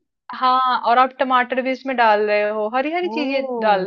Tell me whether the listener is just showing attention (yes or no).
yes